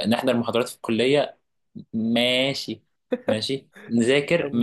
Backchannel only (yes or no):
yes